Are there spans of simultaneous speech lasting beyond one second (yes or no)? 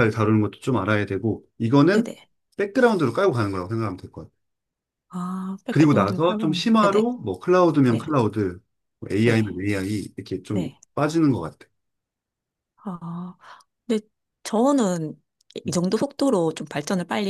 yes